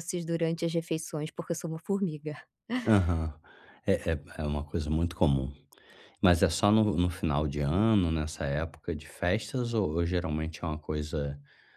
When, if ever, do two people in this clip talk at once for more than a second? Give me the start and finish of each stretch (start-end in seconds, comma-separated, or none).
none